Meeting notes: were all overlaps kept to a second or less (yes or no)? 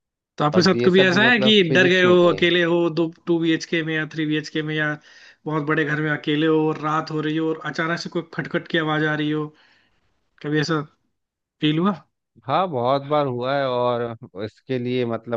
no